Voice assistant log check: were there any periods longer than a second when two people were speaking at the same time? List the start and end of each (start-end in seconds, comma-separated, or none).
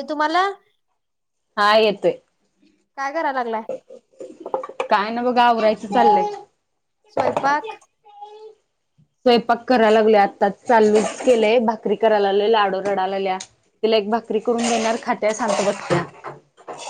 none